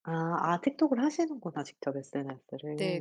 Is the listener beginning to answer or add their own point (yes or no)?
yes